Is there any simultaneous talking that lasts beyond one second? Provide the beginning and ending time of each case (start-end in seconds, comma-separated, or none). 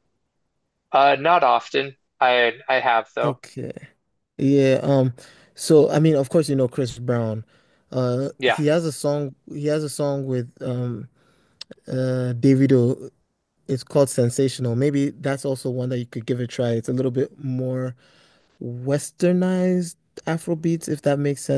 none